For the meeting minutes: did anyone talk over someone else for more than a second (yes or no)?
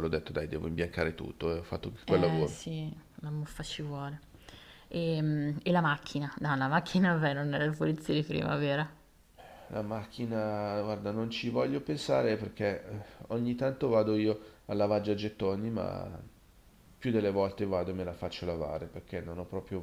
no